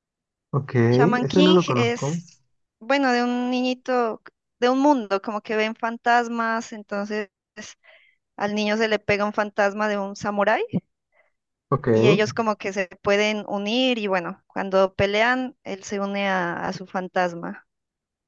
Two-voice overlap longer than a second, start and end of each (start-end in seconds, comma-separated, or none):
0.9-2.2